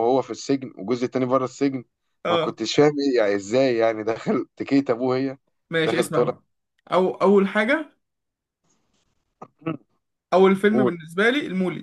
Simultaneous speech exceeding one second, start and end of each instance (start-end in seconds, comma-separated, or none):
none